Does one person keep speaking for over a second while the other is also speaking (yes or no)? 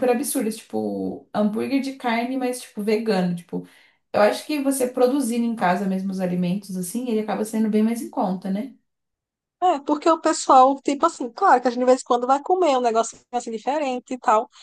no